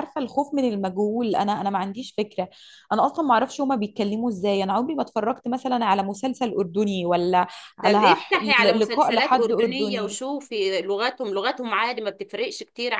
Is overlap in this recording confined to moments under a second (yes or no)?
no